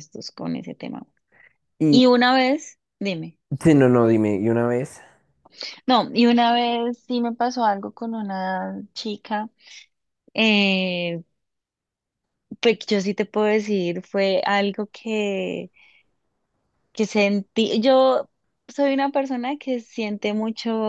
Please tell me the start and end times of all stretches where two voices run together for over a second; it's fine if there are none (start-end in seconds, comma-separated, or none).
none